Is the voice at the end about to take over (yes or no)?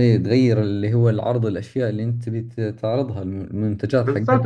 yes